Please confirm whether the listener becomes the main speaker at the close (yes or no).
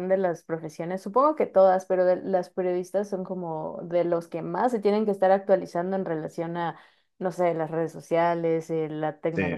no